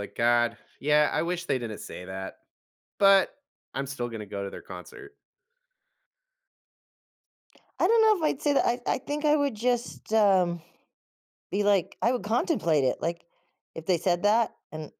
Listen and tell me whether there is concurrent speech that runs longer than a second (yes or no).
no